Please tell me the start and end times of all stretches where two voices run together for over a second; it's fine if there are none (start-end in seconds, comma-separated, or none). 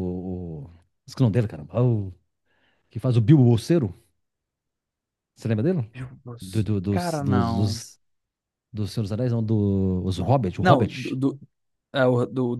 6.4-7.8